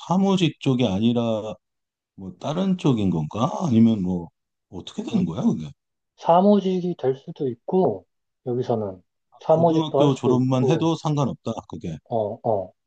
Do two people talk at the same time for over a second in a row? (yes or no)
yes